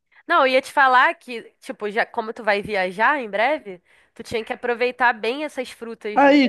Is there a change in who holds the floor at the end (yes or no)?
yes